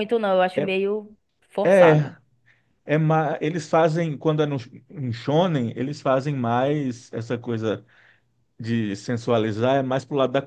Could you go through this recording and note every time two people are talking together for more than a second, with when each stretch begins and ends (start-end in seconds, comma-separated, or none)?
none